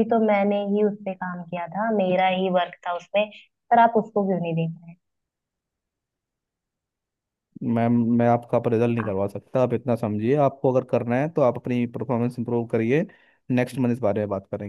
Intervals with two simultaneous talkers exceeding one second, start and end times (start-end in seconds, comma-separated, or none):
none